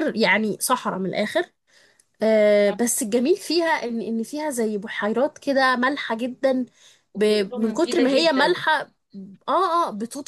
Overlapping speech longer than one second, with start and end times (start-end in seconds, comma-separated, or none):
7.1-8.6